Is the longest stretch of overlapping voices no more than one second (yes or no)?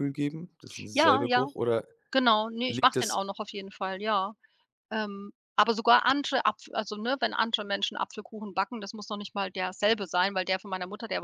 yes